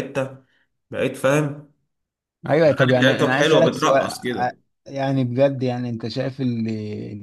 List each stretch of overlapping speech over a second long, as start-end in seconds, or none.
2.6-4.6